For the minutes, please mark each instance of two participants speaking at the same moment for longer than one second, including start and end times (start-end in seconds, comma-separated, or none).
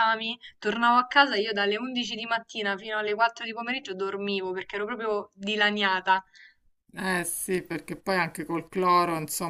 none